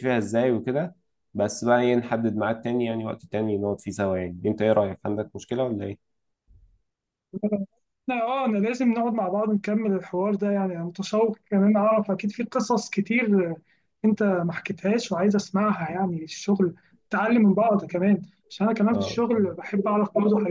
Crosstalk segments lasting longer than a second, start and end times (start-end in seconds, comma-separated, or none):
none